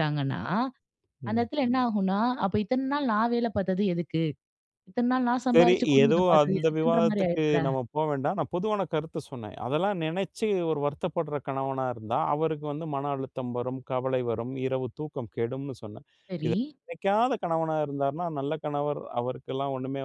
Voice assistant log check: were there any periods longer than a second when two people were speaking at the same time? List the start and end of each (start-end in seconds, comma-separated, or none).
5.5-7.6